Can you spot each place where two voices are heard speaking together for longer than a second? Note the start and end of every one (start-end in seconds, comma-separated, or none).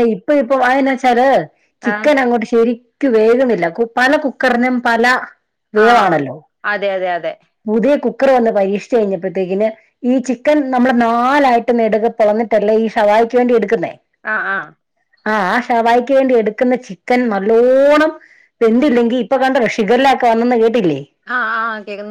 none